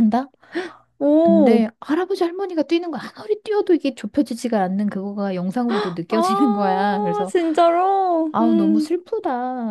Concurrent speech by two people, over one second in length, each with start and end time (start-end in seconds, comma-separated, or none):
6.1-7.3